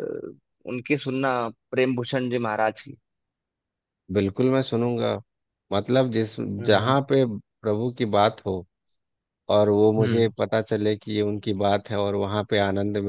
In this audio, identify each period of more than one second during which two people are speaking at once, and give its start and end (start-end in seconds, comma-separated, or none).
none